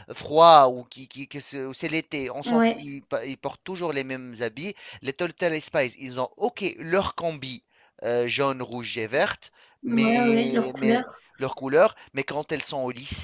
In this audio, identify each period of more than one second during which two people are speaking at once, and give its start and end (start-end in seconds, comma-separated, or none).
9.8-11.0